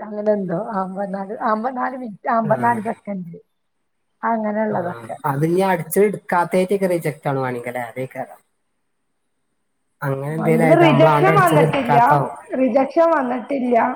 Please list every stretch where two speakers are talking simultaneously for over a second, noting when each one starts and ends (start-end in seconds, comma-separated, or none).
10.6-12.0